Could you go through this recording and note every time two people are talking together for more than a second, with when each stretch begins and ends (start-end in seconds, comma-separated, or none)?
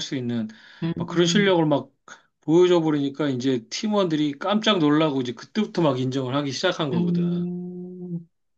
none